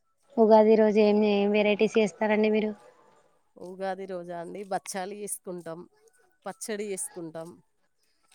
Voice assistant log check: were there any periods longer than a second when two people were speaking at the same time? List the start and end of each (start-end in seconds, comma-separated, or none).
none